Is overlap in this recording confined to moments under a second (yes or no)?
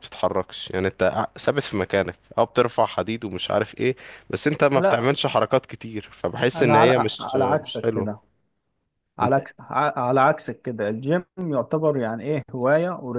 no